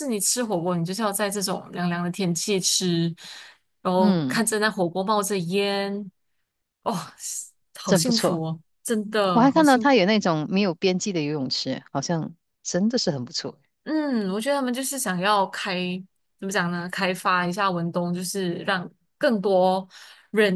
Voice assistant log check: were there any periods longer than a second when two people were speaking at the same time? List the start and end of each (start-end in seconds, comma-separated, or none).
none